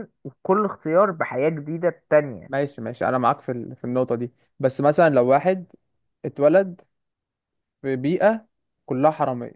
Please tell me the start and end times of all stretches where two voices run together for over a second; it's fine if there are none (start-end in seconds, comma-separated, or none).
none